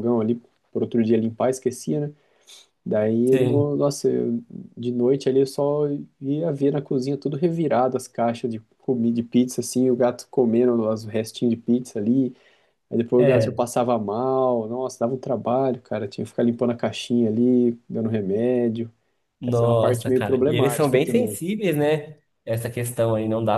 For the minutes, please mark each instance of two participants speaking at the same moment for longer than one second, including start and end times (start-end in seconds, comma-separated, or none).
19.5-21.4